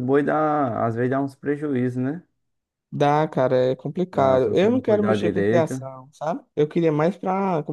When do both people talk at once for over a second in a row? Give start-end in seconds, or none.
4.1-5.8